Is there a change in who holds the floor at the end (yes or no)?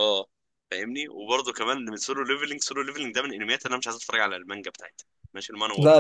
yes